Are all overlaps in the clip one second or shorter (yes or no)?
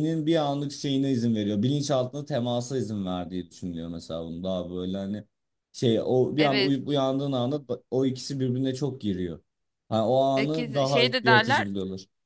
no